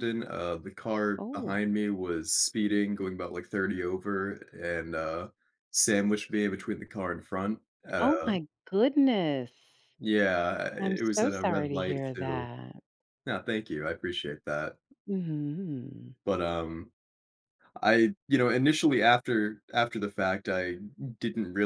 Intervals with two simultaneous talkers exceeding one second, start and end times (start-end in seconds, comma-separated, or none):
10.8-12.5